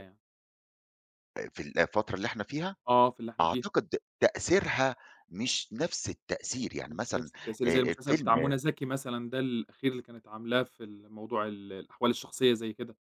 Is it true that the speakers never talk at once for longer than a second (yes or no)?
no